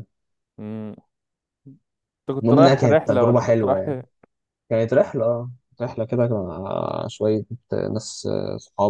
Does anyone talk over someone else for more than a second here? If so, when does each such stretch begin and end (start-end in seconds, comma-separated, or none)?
2.4-3.9